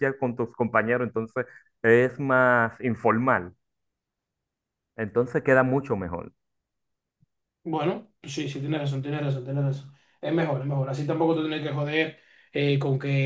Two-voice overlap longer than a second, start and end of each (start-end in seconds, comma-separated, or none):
none